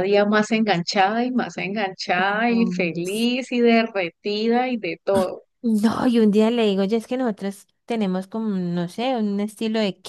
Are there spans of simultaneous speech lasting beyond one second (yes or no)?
no